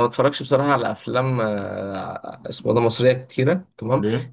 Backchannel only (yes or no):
yes